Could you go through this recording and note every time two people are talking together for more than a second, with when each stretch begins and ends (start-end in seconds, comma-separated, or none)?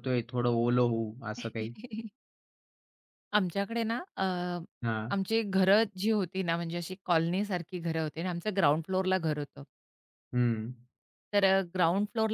none